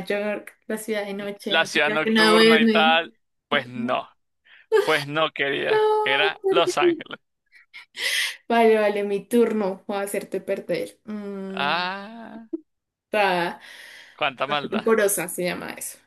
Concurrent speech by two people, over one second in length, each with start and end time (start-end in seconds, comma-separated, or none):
1.5-3.0